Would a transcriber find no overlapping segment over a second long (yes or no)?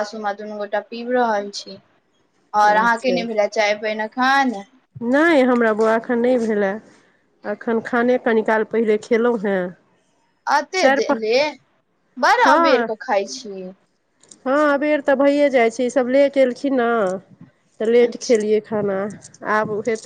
yes